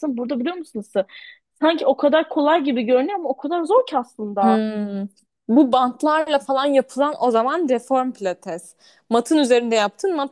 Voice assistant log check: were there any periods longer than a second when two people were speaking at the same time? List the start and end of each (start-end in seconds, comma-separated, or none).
none